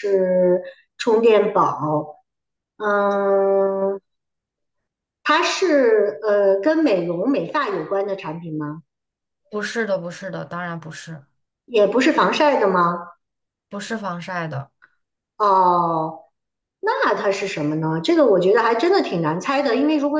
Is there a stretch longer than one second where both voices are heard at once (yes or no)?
no